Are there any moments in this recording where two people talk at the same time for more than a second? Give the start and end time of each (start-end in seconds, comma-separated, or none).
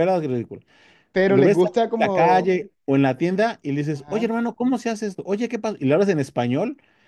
1.2-2.5